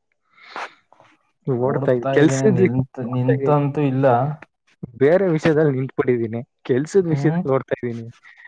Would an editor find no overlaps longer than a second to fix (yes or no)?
no